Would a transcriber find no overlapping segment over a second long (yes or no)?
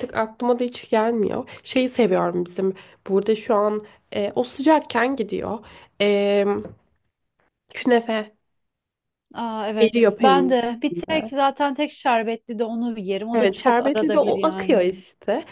no